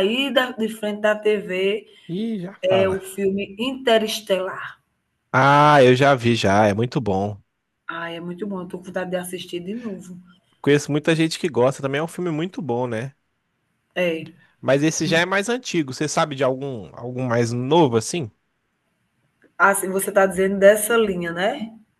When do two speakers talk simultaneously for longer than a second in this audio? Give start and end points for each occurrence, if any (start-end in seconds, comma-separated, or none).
none